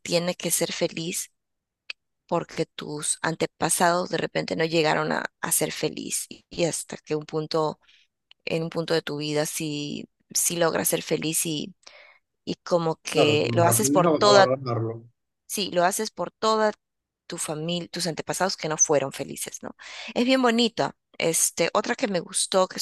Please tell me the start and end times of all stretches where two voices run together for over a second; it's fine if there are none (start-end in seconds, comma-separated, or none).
13.1-14.6